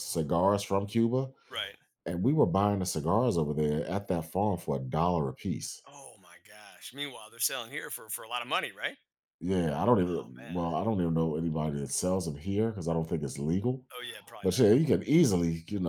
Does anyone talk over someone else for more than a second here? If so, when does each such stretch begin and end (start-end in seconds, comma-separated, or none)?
none